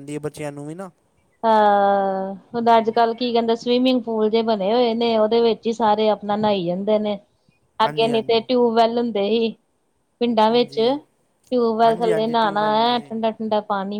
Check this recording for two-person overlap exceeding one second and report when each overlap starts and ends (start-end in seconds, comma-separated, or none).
11.9-13.1